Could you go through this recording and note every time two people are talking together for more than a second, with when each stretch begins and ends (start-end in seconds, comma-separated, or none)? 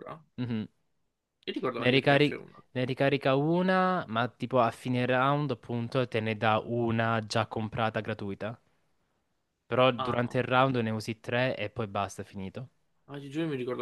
none